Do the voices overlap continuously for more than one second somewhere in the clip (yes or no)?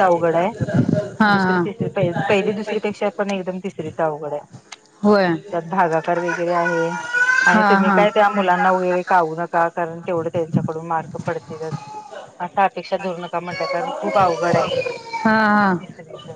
no